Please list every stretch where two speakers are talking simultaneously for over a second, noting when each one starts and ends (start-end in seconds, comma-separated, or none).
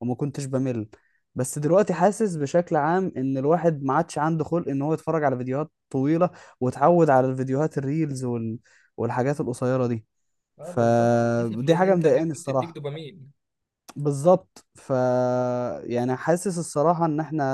10.6-12.8